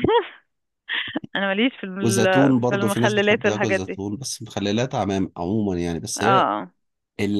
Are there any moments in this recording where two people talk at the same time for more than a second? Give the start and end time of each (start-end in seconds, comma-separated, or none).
2.0-4.0